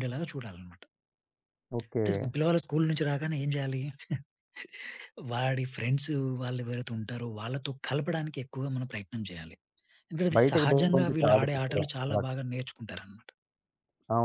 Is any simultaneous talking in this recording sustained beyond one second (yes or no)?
yes